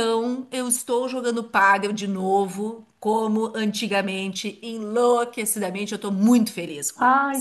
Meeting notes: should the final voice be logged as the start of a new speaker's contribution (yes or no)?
yes